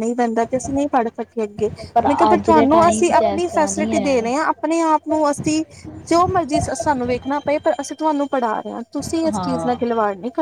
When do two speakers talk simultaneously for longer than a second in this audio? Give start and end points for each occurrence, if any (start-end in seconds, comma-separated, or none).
2.3-4.5